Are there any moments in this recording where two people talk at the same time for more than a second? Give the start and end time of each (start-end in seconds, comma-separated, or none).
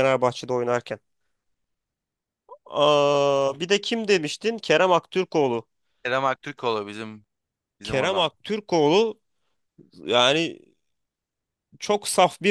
none